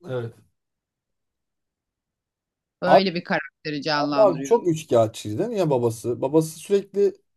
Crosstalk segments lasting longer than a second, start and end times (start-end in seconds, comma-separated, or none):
none